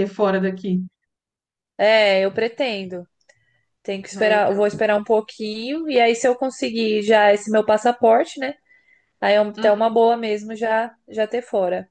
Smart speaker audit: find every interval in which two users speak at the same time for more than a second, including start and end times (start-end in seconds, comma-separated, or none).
none